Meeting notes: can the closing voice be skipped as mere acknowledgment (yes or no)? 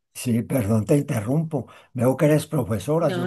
yes